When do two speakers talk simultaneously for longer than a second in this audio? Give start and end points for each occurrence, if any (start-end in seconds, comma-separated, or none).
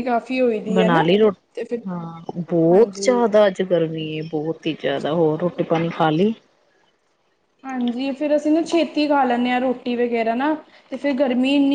none